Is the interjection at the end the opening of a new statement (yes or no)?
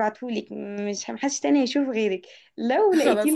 no